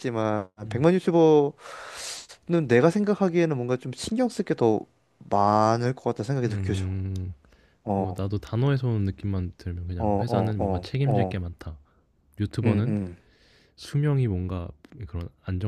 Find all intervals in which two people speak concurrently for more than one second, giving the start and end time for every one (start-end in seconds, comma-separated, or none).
10.0-11.5